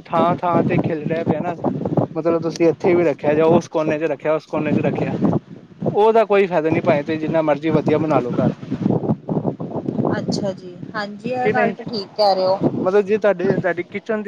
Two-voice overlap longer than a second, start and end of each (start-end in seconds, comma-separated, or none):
none